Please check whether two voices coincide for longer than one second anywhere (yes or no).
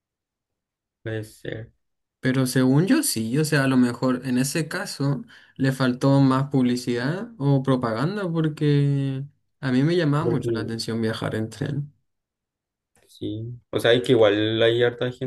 no